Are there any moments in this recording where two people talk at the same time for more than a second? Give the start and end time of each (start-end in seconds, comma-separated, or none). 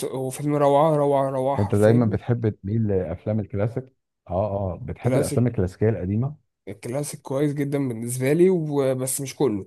none